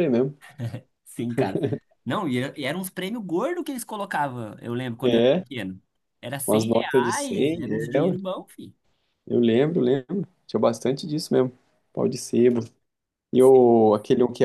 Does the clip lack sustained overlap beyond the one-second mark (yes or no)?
no